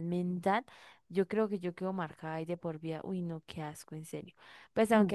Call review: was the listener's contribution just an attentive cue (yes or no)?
yes